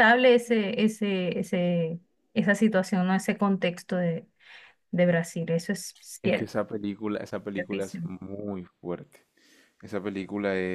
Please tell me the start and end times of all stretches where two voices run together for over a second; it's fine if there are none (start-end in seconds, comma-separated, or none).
none